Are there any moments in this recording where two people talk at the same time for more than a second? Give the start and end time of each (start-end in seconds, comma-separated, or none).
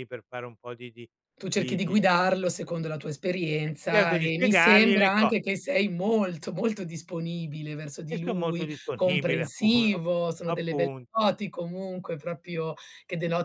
3.9-5.4, 8.1-9.7